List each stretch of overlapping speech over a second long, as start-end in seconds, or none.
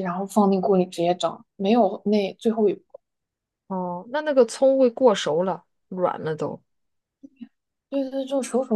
none